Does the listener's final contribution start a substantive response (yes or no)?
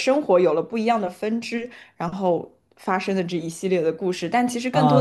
yes